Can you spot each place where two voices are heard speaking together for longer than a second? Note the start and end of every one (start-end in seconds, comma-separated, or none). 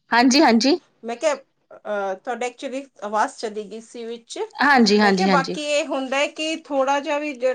none